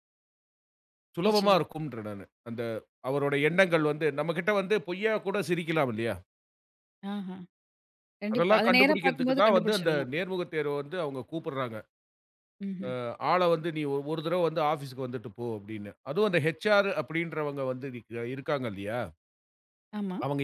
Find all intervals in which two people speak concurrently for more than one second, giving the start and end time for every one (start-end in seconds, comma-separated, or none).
8.3-10.1